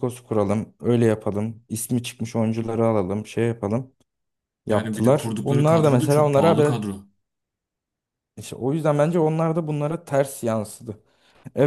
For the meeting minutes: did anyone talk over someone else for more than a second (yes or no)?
yes